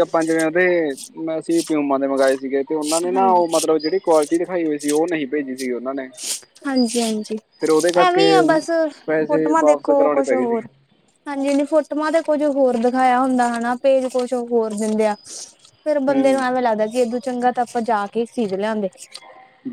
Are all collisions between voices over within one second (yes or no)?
no